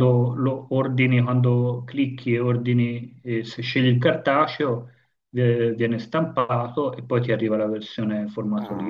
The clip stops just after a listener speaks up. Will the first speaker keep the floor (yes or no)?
no